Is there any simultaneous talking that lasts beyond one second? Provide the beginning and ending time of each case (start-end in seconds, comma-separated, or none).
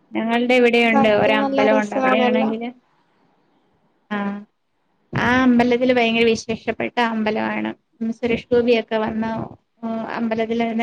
0.9-2.5